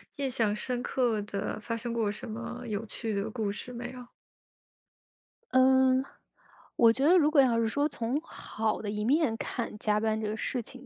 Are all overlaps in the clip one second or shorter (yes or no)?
yes